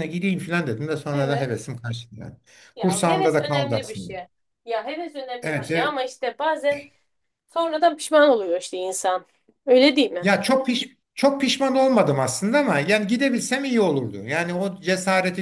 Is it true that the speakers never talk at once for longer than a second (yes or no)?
no